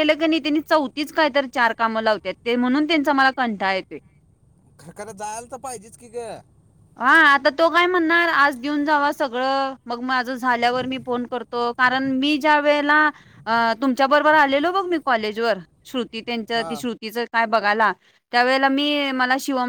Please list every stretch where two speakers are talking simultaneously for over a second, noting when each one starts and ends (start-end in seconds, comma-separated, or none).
none